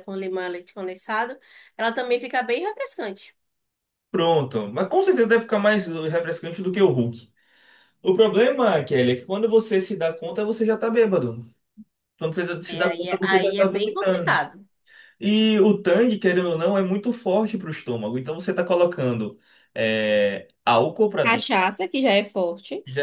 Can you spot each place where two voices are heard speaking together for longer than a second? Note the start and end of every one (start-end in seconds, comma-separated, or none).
12.7-14.4